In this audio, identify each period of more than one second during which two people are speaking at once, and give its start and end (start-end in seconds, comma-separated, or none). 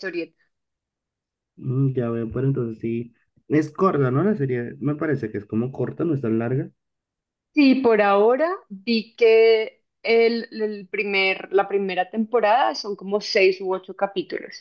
none